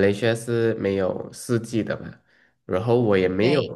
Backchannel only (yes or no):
yes